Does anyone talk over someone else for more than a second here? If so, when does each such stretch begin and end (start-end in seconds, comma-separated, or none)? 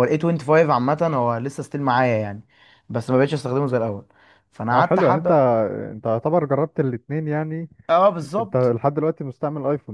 none